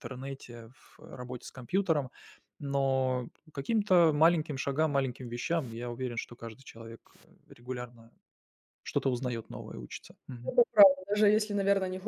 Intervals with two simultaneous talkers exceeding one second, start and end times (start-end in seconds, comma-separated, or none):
none